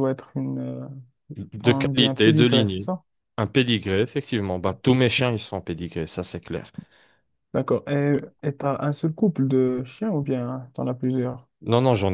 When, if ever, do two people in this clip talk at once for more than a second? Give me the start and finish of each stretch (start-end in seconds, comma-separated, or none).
1.6-2.9